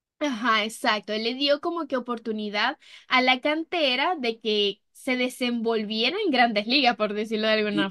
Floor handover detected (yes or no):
yes